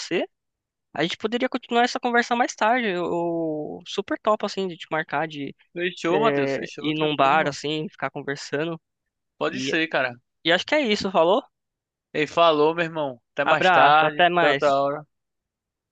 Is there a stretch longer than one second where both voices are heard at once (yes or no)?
yes